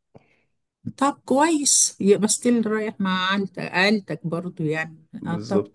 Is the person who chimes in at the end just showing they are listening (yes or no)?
yes